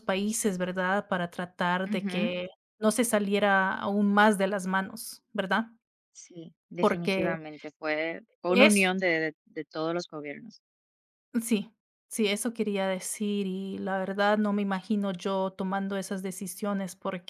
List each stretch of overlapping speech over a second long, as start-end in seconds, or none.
none